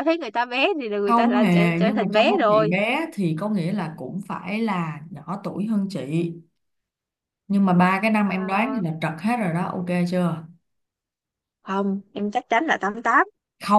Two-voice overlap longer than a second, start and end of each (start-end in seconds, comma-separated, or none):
1.1-2.7